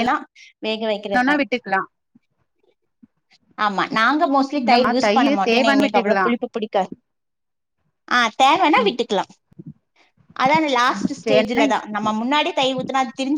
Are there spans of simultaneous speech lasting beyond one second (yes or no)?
yes